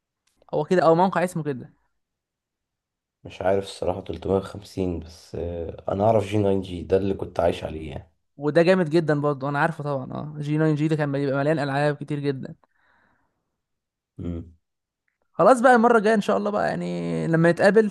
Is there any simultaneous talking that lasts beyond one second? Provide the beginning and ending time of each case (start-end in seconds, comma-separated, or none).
none